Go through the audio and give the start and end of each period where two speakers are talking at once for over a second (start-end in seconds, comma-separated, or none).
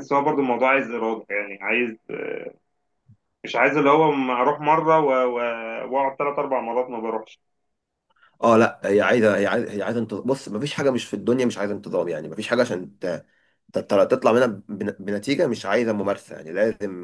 none